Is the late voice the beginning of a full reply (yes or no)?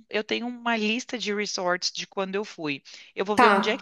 no